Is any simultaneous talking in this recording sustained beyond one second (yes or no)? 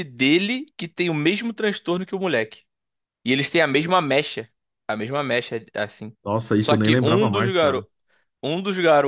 yes